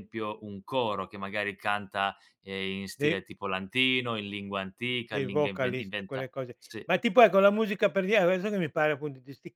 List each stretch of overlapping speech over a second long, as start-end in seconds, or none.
5.1-6.8